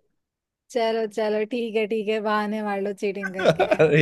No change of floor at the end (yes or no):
no